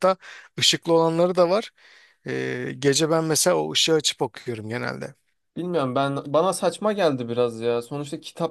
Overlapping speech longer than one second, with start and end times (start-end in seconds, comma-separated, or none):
none